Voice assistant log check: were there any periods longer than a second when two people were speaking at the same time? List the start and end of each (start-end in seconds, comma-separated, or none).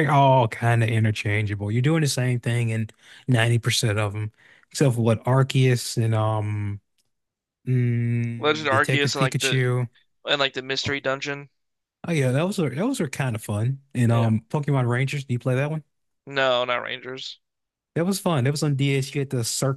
8.4-9.6